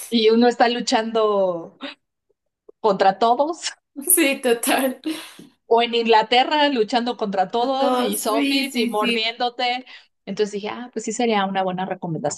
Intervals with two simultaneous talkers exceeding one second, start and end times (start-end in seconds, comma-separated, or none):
7.8-9.3